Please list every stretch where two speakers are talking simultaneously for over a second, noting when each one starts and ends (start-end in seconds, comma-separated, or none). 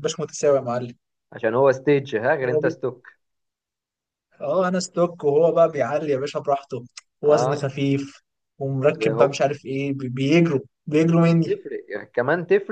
none